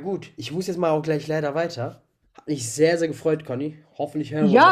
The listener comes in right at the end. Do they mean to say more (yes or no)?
yes